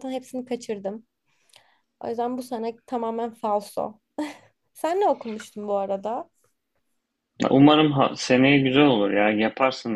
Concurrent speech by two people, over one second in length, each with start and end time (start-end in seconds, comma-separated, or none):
none